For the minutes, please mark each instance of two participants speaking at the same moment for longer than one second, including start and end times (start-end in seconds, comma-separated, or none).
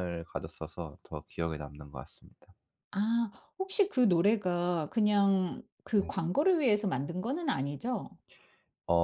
none